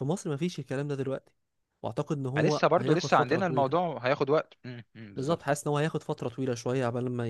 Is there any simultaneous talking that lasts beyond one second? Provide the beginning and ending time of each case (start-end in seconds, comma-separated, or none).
2.4-3.8